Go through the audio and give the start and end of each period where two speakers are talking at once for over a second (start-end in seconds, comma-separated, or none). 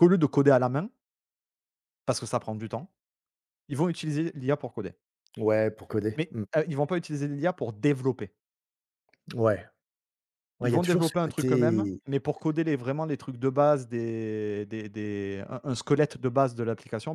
10.6-12.0